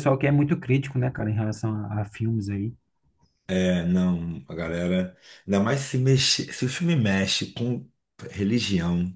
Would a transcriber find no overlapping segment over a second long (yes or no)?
yes